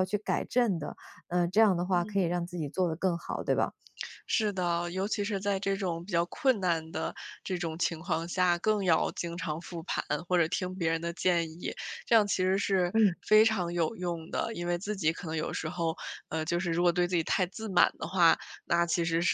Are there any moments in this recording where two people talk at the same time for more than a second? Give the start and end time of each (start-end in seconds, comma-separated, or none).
none